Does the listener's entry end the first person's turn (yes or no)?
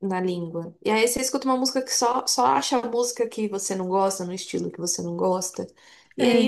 no